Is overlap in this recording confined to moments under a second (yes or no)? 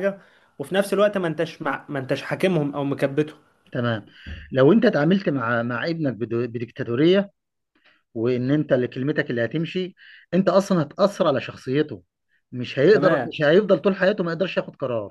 yes